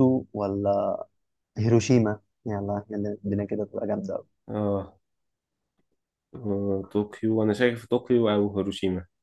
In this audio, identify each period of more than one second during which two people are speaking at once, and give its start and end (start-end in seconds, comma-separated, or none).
none